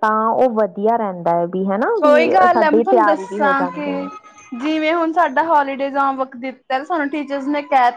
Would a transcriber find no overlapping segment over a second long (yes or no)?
no